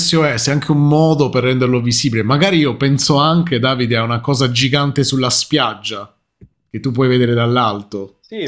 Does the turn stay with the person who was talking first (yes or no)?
no